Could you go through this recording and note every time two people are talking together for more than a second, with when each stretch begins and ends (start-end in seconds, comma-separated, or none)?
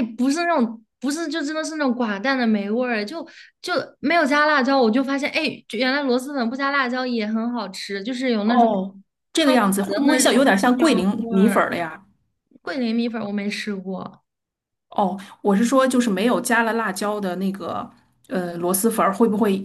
9.4-11.6